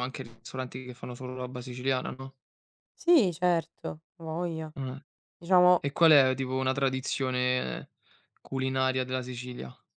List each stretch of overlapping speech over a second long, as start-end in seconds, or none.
none